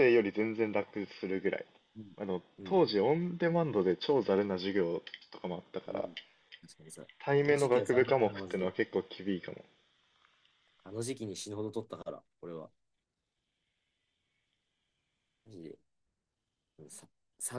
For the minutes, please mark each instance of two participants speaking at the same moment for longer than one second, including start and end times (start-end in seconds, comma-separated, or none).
7.2-8.7